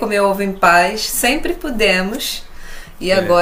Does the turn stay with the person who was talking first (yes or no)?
yes